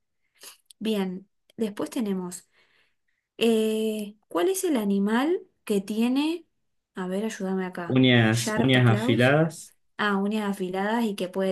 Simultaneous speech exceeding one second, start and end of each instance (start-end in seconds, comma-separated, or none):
7.8-9.3